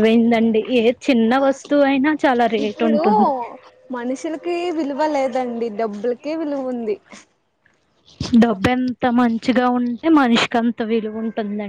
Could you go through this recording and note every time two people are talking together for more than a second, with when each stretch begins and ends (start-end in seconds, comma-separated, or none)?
none